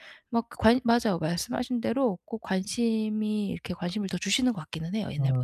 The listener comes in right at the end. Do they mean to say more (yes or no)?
yes